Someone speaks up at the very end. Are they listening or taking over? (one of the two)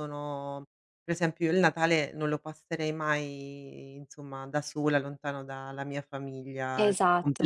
taking over